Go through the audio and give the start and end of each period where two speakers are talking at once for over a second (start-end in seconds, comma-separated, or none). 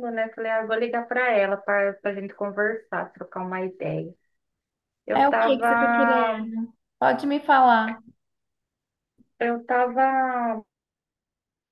5.1-6.5